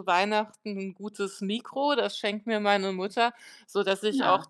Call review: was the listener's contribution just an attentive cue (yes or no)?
yes